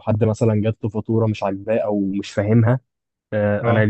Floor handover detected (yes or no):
no